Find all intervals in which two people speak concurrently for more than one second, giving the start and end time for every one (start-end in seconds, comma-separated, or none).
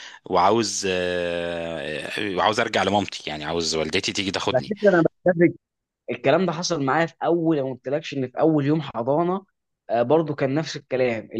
none